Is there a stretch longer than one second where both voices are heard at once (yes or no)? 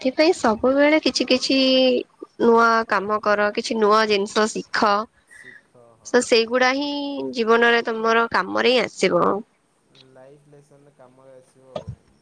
no